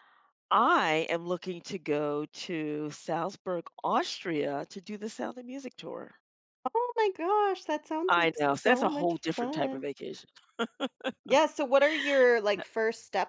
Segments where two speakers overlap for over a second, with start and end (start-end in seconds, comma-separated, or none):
8.1-9.9